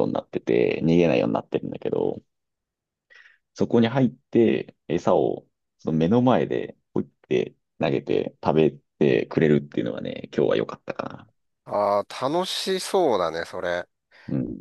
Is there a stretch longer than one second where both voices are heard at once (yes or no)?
no